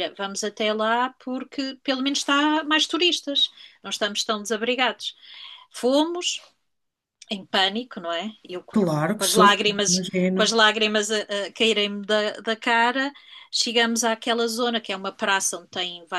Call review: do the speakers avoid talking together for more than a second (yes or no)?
no